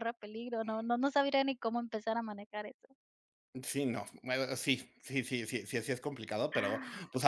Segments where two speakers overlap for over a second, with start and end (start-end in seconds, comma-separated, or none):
none